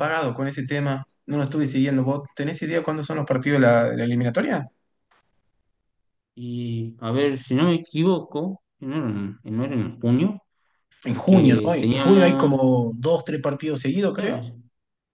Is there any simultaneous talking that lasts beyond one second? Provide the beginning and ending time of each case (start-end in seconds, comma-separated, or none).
11.1-12.5